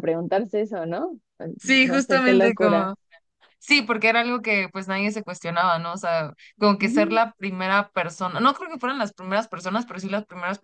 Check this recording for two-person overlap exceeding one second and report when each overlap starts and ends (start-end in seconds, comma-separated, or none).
1.6-2.9